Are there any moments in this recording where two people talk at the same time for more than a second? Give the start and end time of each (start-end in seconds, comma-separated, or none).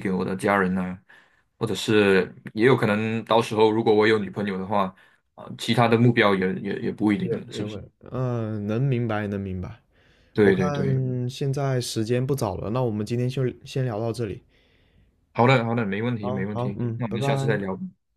16.2-17.6